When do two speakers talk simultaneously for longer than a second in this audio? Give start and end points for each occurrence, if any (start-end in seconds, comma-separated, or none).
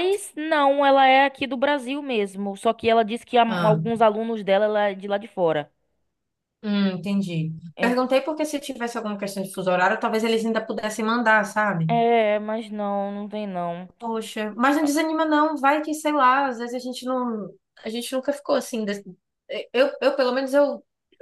none